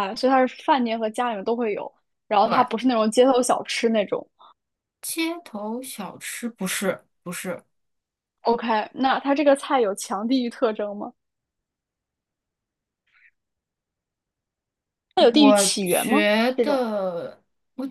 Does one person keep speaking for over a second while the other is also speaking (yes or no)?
no